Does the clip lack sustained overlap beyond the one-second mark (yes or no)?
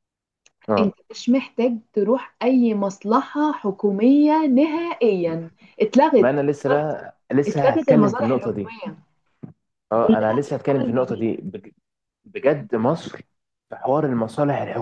no